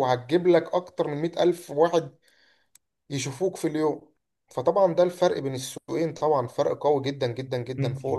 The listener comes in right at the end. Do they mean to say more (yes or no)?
yes